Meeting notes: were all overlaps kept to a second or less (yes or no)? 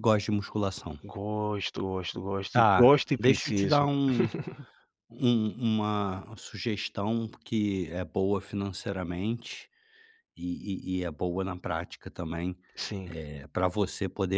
no